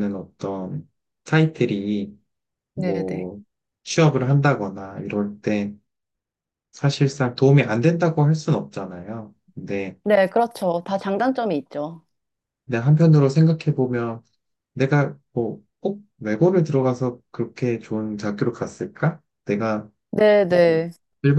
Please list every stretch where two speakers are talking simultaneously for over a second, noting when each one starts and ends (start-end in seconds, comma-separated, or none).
none